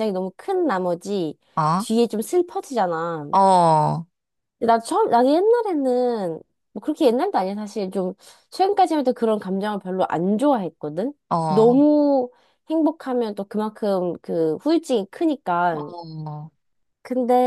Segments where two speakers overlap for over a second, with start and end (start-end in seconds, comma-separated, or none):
none